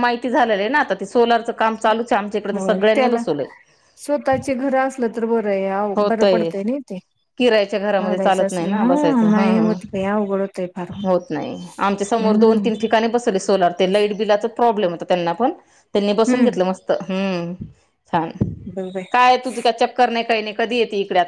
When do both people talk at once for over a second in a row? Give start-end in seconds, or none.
8.0-9.7